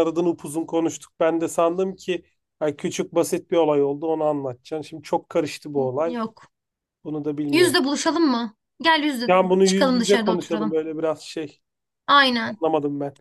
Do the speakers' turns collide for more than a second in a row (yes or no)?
yes